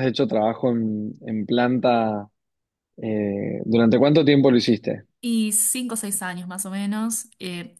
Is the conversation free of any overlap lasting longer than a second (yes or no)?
yes